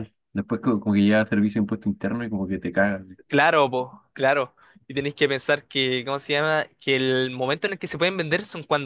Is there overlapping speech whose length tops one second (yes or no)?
no